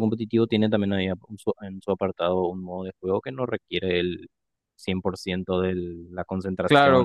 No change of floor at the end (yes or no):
no